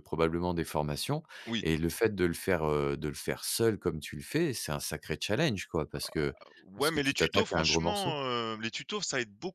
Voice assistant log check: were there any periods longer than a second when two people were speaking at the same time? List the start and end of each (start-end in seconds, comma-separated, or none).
6.8-8.2